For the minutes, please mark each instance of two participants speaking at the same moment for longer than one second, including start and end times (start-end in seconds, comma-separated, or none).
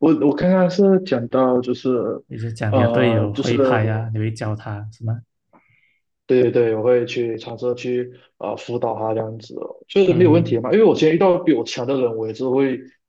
2.7-4.1